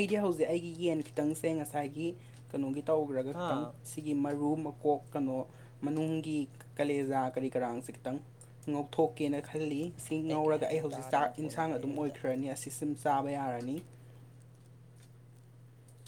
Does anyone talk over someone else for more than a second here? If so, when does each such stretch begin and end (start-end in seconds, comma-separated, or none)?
10.4-12.2